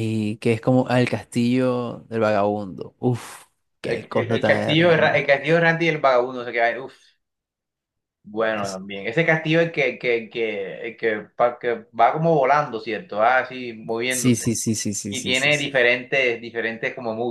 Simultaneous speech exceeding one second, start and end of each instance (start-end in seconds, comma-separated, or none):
3.8-5.2